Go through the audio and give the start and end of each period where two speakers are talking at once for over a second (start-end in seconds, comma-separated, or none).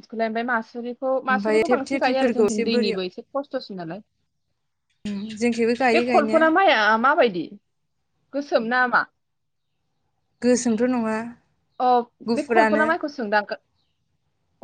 1.3-3.0